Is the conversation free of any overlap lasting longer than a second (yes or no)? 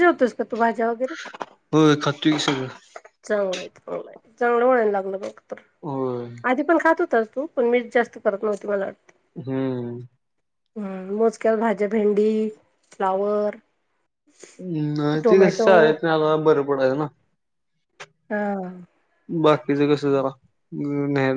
yes